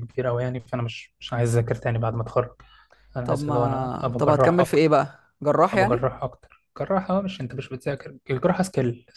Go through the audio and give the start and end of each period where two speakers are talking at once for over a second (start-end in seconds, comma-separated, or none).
3.2-5.0